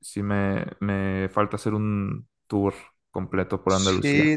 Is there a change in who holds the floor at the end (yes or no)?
yes